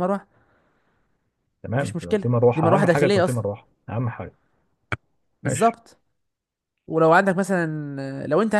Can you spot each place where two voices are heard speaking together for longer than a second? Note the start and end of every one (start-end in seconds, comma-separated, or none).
1.8-3.4